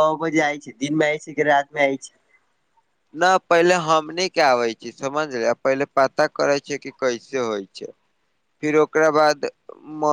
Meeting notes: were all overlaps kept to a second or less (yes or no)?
yes